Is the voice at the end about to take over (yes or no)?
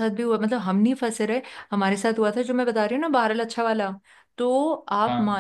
no